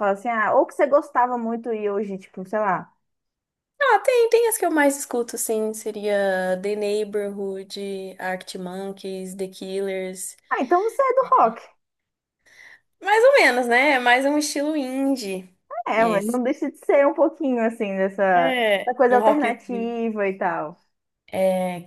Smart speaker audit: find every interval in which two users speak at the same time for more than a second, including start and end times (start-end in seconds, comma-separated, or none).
18.4-20.0